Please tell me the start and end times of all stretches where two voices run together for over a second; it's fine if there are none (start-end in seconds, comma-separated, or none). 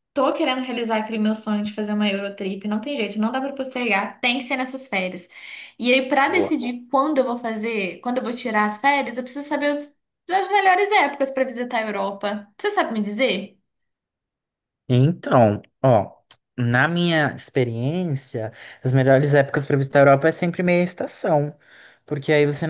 none